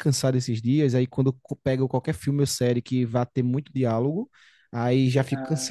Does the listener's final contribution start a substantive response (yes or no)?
no